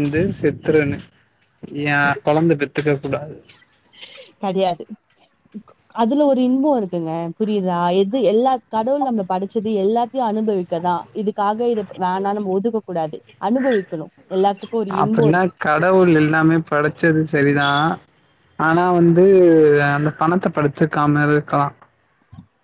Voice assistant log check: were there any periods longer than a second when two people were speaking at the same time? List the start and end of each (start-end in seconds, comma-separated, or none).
none